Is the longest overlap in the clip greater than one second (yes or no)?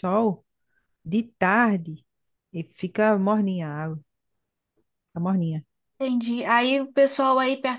no